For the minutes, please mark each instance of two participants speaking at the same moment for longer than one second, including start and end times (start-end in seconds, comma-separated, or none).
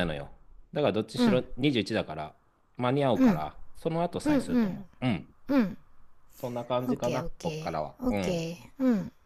6.9-8.5